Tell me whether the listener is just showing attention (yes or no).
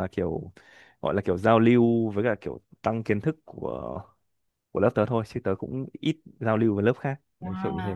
no